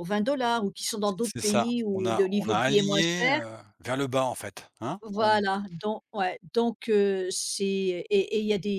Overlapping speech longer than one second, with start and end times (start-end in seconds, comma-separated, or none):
1.1-3.4